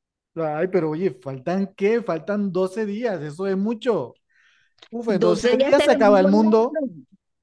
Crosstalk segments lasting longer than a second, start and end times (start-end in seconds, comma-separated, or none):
5.1-6.8